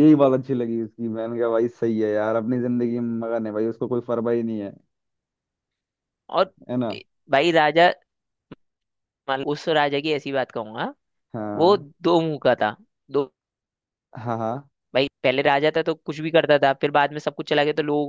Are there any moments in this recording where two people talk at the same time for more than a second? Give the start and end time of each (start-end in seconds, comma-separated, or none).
none